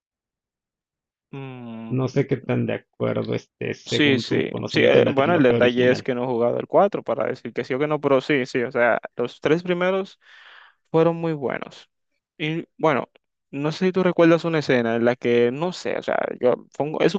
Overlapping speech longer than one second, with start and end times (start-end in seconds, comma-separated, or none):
3.8-6.1